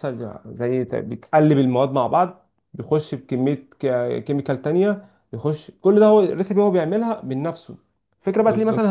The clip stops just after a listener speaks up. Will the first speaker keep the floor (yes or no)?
yes